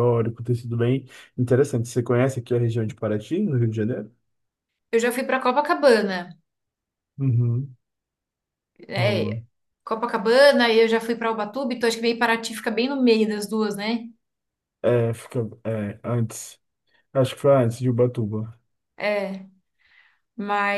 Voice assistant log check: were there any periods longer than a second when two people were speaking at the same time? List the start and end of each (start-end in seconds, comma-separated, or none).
none